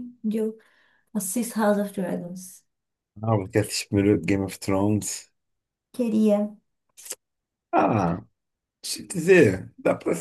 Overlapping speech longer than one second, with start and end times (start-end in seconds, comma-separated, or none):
none